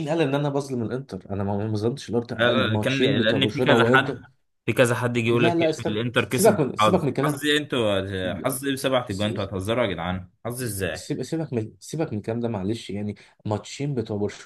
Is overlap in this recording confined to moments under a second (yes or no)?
no